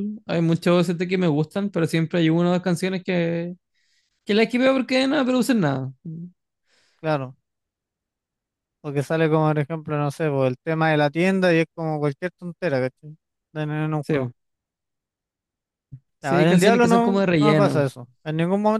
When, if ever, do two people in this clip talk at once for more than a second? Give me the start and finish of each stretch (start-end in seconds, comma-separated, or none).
16.2-17.9